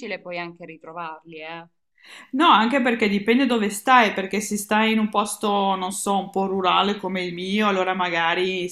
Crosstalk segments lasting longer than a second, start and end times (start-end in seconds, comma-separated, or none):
none